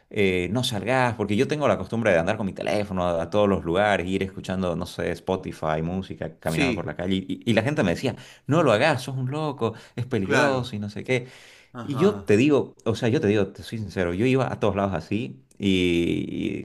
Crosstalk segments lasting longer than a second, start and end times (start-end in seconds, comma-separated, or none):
none